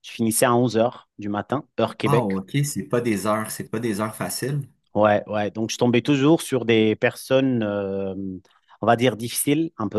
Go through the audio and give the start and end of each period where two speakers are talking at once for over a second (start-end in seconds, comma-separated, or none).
none